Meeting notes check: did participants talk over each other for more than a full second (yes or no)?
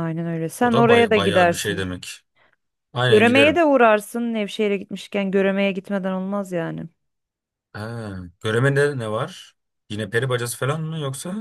yes